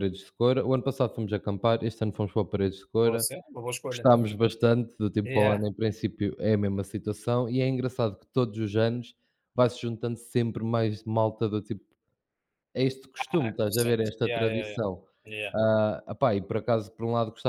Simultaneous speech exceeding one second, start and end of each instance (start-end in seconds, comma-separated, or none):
13.2-14.8